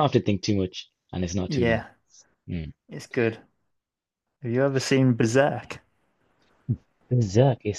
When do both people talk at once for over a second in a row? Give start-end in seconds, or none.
none